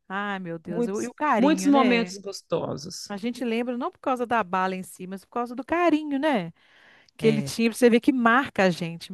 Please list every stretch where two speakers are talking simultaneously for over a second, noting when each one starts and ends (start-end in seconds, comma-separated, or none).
0.7-2.1